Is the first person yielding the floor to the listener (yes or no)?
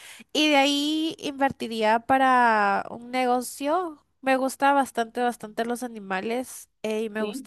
no